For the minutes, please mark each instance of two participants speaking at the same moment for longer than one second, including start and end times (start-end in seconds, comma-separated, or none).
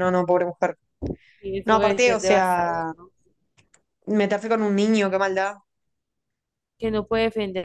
1.6-2.9